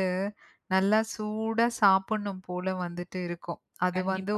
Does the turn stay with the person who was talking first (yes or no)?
yes